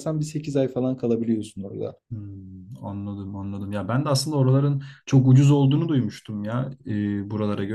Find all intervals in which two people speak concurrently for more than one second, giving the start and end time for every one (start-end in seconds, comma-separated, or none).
none